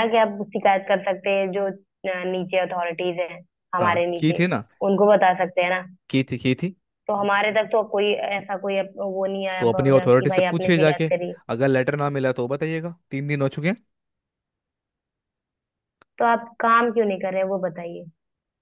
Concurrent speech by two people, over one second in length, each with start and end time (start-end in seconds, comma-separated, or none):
9.6-11.1